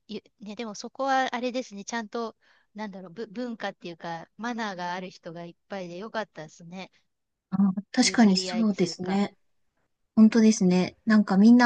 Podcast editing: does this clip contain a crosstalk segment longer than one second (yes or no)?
yes